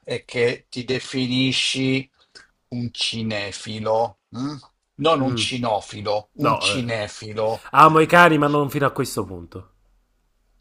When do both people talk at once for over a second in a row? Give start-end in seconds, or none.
none